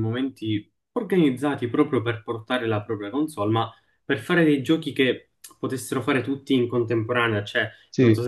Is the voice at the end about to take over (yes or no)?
no